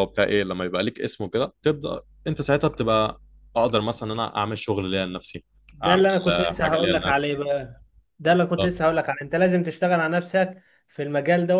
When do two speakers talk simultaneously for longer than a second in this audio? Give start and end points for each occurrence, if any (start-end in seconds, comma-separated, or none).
5.8-7.3